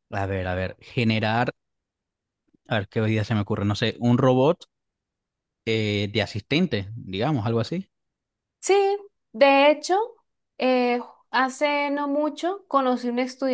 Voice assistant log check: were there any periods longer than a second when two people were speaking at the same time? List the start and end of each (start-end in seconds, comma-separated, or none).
none